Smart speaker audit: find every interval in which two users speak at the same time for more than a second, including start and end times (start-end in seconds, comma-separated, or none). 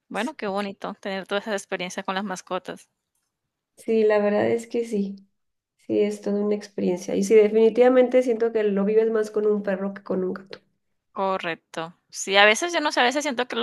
none